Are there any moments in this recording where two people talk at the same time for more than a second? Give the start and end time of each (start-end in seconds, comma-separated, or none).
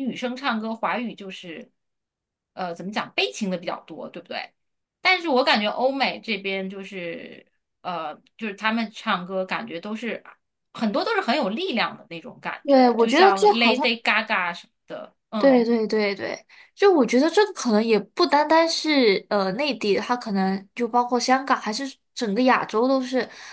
12.6-13.9